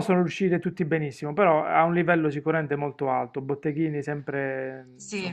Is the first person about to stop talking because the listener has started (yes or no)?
no